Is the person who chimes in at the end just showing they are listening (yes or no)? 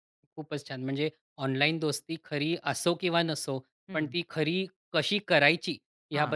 yes